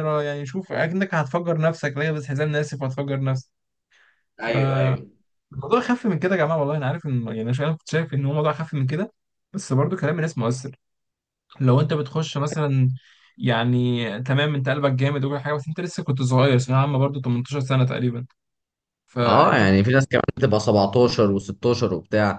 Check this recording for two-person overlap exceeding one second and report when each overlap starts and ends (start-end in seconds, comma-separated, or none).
none